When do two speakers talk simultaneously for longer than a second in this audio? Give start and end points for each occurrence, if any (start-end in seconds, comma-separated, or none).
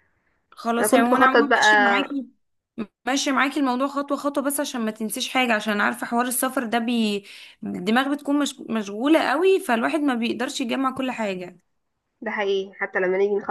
0.8-2.2